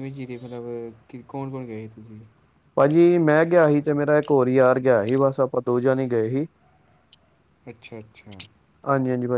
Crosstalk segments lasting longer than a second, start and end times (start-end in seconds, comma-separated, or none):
none